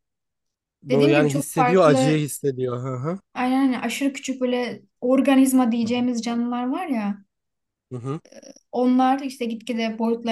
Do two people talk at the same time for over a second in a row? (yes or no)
yes